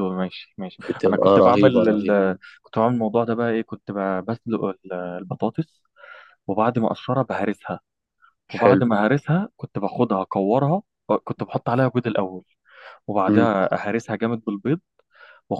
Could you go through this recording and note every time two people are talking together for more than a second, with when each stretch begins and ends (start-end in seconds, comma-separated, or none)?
0.9-2.2